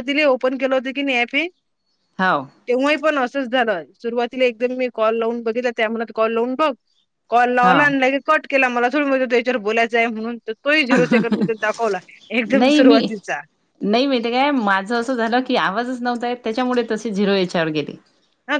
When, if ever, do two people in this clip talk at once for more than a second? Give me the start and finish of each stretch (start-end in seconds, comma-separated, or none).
none